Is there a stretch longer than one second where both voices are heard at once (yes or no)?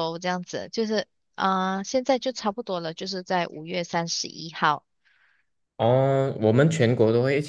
no